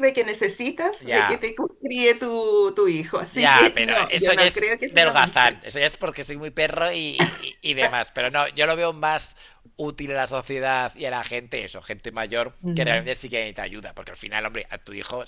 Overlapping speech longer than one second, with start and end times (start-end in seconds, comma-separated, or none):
3.3-5.6